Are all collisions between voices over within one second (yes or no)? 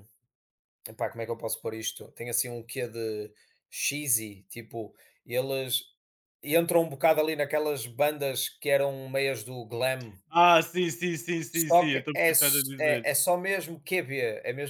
no